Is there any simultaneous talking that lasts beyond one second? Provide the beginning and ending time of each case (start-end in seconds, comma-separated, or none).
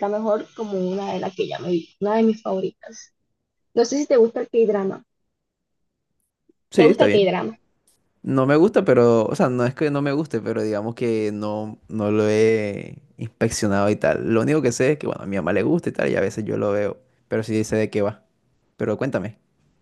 none